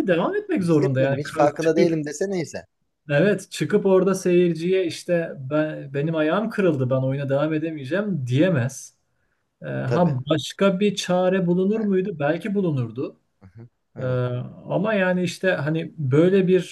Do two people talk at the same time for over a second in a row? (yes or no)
yes